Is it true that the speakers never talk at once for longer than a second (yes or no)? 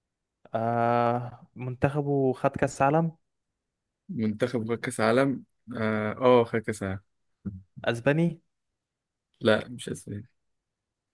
yes